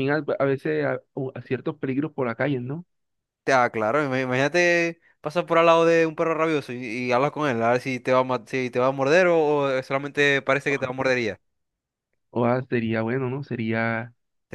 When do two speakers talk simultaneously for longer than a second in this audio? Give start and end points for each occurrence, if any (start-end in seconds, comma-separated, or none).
none